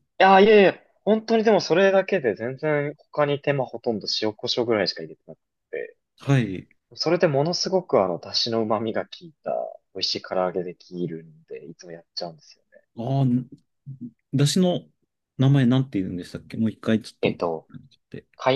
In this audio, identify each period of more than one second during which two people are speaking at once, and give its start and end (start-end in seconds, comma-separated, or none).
none